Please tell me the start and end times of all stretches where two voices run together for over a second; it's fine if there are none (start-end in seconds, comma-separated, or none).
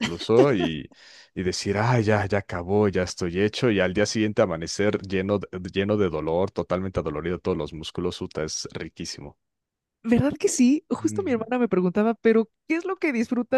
none